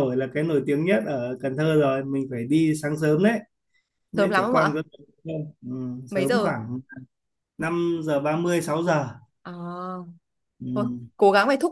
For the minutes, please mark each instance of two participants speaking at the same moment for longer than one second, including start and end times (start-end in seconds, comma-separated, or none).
none